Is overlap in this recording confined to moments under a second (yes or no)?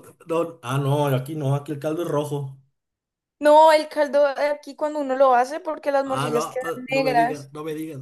no